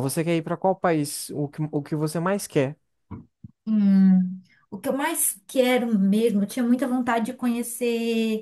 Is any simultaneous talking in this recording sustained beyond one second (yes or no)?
no